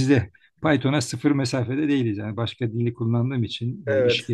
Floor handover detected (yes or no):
no